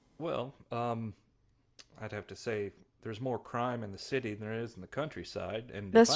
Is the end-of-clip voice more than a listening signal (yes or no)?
no